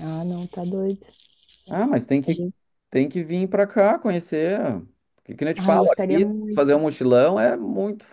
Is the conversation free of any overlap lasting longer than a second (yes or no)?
no